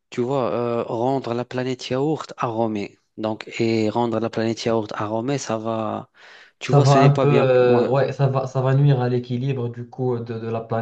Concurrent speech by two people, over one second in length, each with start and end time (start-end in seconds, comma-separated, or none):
6.6-7.9